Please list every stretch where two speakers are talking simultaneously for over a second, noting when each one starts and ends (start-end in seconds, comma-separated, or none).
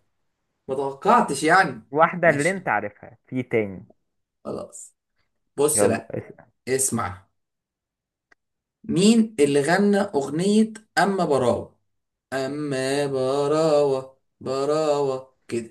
none